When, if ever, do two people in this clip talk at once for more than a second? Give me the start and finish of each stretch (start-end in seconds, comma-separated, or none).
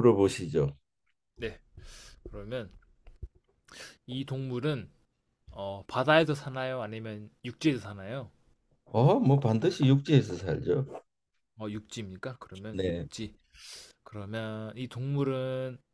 none